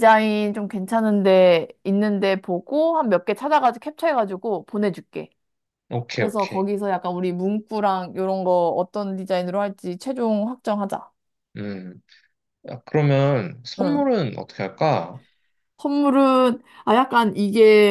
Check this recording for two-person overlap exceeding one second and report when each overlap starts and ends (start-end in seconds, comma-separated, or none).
none